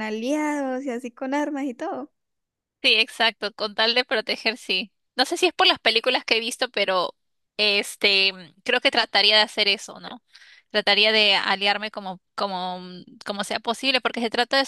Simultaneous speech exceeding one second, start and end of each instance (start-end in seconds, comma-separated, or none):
none